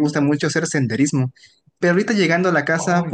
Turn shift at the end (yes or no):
no